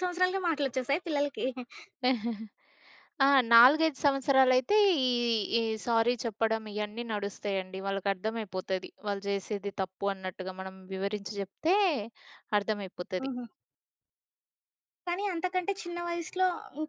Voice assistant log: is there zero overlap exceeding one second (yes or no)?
yes